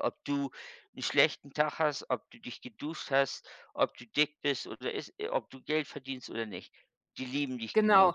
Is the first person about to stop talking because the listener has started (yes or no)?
yes